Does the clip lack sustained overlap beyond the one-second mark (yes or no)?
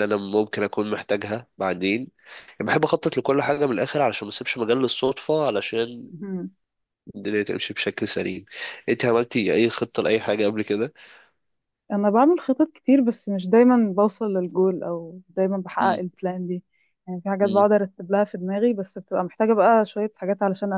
yes